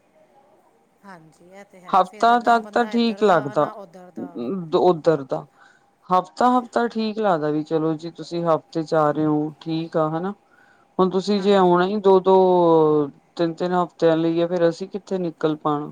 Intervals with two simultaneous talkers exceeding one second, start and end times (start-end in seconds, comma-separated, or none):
2.0-3.7